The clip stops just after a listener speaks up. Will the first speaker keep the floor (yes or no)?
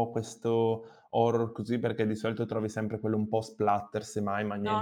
no